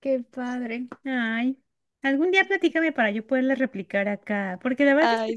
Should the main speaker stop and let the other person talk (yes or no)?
no